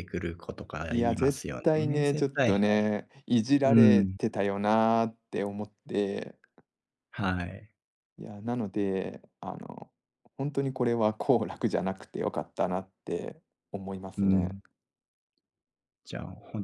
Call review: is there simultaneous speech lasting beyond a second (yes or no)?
yes